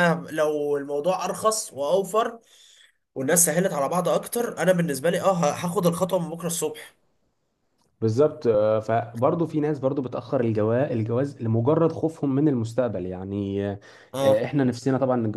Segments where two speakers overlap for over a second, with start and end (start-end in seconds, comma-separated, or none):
none